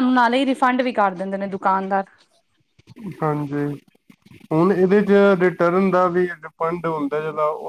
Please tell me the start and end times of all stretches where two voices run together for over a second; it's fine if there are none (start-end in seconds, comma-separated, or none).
none